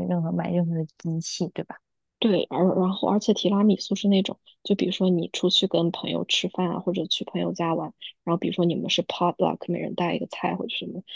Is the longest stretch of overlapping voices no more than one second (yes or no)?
yes